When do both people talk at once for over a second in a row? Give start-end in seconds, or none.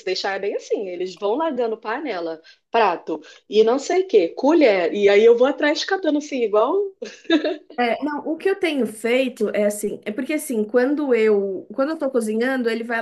none